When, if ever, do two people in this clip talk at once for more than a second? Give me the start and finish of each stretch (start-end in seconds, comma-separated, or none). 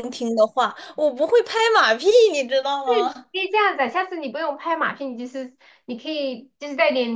none